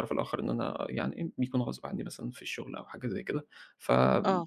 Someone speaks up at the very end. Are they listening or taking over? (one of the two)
listening